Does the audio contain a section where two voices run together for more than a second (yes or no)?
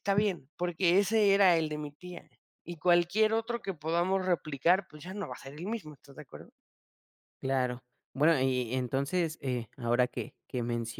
no